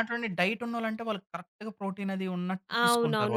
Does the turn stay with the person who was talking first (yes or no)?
no